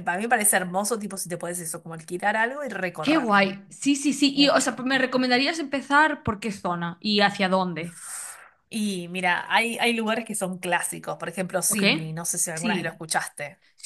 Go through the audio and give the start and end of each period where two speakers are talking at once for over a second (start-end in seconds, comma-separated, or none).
none